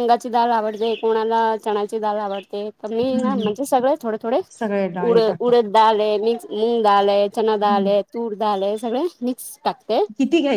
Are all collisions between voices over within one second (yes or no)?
yes